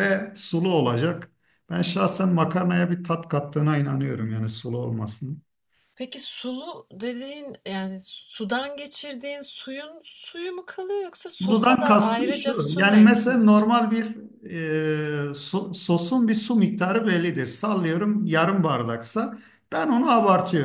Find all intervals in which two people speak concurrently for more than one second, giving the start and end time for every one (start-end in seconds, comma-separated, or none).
11.2-13.7